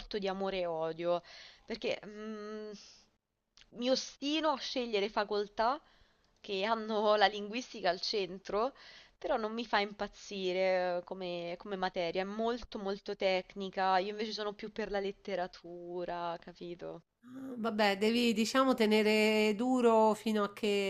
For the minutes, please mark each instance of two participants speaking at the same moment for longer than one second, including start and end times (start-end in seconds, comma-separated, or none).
none